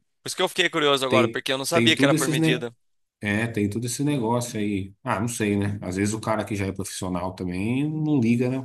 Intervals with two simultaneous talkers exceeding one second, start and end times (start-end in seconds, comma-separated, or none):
1.1-2.7